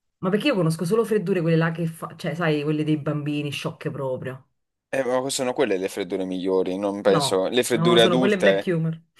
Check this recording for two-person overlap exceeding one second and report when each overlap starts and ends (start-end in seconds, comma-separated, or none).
7.0-8.7